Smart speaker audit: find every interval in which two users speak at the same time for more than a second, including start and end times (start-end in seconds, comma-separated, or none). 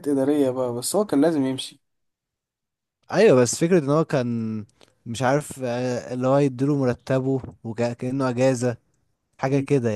none